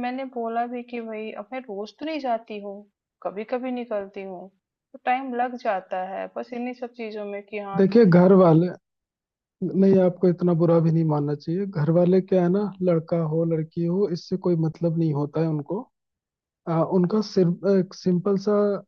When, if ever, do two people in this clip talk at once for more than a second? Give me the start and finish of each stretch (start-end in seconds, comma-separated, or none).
none